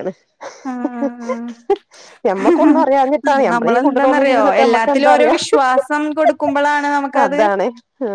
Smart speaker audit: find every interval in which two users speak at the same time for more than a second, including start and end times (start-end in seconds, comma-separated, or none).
3.5-5.4